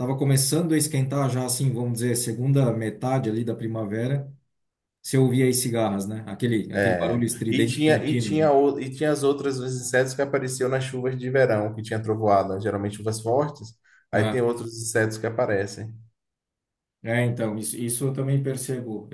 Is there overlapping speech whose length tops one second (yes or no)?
yes